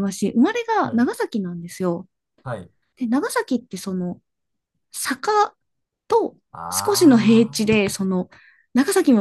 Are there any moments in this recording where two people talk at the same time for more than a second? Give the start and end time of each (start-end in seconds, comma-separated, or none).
6.5-7.8